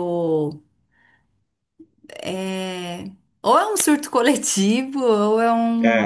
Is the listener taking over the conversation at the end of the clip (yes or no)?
yes